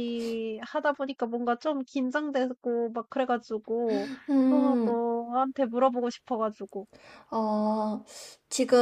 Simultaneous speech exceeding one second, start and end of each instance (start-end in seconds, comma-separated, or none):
none